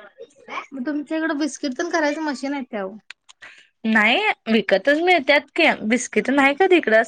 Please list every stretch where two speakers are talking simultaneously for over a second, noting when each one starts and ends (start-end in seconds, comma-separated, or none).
none